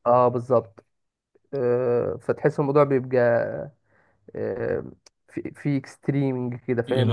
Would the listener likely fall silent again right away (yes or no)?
no